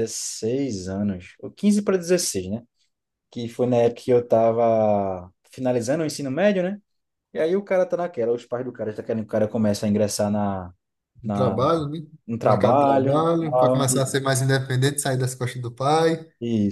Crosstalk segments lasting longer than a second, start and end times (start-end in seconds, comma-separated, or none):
12.4-14.1